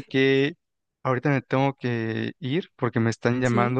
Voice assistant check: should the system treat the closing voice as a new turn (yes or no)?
no